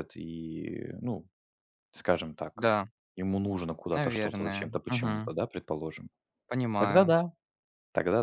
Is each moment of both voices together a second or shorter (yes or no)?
no